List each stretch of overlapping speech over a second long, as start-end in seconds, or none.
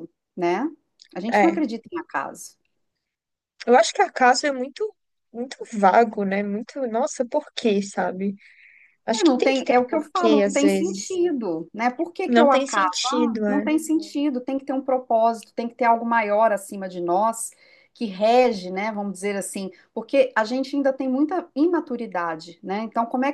9.1-11.2, 12.3-13.7